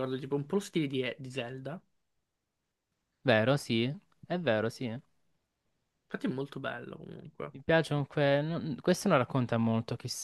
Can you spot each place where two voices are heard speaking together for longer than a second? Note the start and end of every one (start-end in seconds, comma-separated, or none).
none